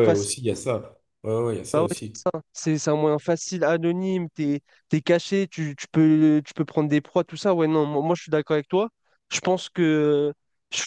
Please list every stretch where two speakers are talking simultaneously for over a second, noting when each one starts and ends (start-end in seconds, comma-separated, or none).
none